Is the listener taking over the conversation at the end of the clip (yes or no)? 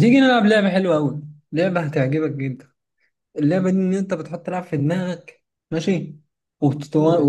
no